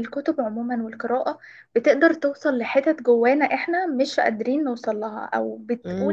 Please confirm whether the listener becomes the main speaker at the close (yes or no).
no